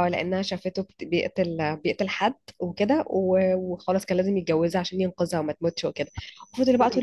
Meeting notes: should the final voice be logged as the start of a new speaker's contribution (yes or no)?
no